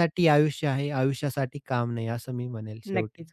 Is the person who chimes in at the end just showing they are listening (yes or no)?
no